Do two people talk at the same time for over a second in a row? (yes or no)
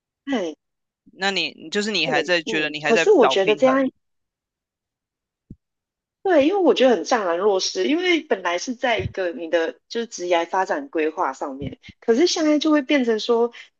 yes